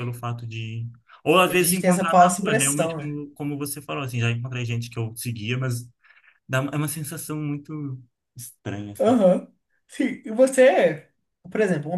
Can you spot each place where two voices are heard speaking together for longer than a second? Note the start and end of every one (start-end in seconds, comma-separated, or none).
1.4-3.2